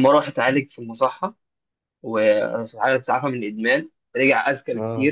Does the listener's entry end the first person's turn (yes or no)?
no